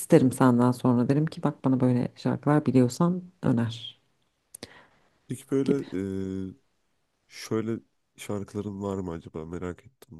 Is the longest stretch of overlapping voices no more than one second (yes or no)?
yes